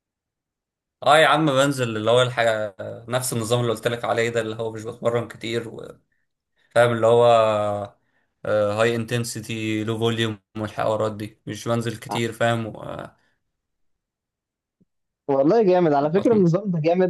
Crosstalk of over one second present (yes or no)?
no